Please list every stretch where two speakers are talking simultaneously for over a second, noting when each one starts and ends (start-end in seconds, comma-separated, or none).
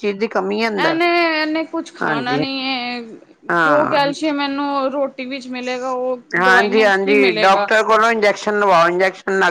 6.4-7.7